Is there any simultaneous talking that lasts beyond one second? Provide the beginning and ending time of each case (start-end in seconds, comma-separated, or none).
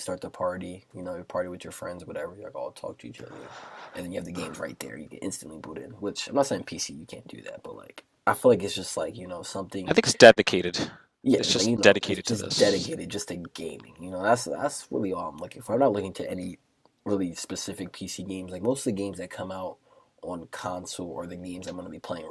11.4-12.9